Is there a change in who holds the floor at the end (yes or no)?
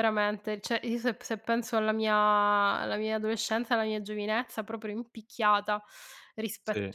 no